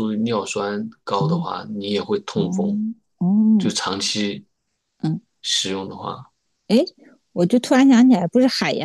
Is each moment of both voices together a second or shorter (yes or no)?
yes